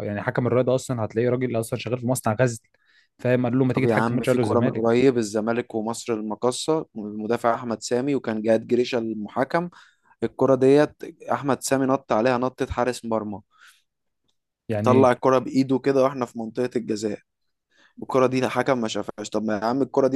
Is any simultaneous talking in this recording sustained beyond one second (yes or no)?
yes